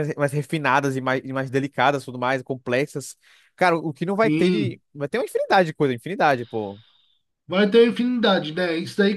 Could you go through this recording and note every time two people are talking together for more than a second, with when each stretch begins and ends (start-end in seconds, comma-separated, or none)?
none